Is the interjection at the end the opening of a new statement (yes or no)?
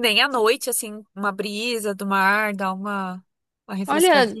yes